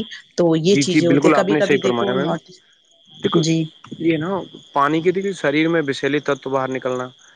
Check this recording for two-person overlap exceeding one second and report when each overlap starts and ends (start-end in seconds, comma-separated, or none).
0.7-2.3